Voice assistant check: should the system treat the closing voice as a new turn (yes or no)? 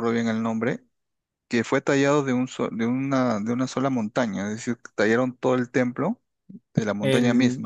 yes